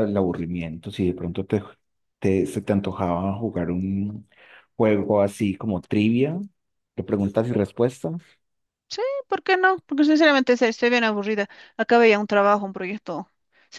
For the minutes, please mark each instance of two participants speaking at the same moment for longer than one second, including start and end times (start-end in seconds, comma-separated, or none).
none